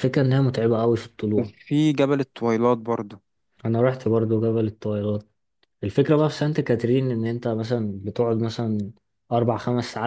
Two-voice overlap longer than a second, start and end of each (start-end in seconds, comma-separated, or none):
none